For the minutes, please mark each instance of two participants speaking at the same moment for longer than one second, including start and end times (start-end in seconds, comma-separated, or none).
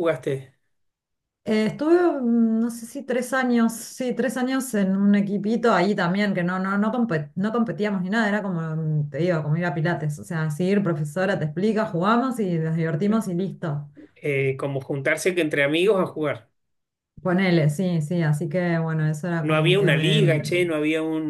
19.4-20.7